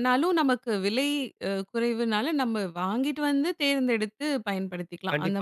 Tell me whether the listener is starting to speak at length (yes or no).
yes